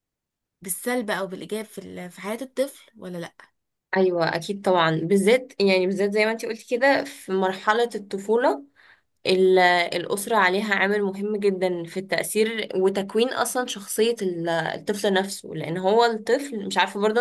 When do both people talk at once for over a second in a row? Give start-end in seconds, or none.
none